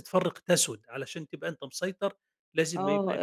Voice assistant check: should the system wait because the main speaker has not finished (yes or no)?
no